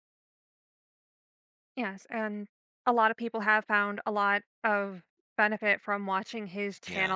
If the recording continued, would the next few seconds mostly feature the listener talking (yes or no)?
no